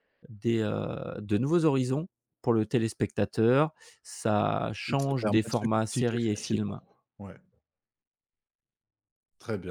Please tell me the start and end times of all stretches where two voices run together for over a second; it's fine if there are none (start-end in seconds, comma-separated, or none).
4.9-6.8